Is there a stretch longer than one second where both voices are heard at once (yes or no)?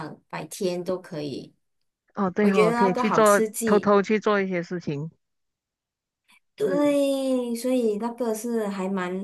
yes